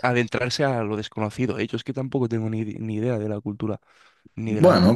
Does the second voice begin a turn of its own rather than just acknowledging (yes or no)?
yes